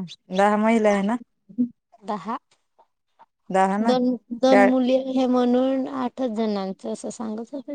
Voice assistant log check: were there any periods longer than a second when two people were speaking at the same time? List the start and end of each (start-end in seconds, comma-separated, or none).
none